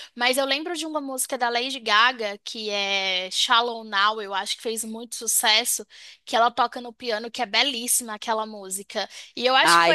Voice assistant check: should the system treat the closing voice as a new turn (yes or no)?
no